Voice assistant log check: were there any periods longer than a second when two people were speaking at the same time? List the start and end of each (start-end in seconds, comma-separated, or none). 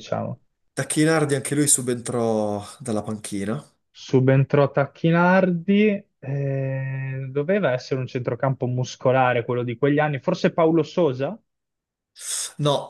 none